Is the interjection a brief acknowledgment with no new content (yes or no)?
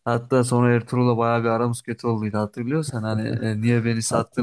yes